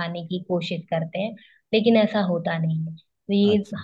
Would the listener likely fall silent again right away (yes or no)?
yes